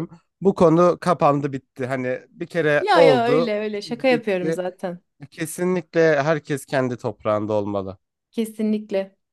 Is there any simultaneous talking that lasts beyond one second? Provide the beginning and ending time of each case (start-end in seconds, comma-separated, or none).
2.8-4.6